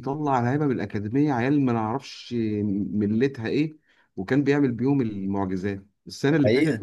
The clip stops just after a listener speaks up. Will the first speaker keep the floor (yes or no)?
yes